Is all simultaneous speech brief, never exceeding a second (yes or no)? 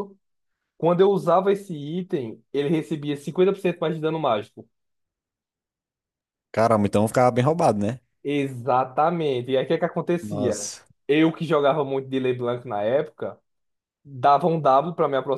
yes